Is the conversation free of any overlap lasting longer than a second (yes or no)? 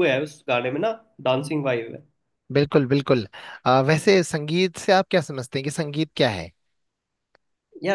yes